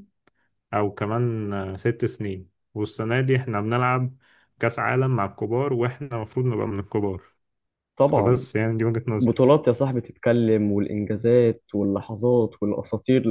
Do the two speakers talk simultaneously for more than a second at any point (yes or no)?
no